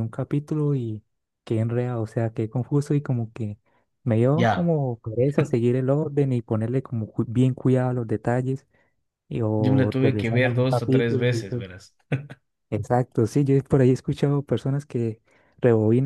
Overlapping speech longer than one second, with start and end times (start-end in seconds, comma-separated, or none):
9.6-11.6